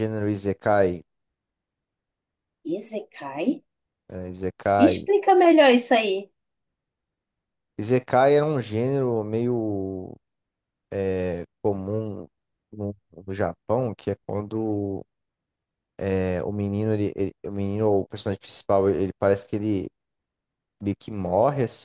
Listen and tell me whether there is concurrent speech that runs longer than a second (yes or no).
no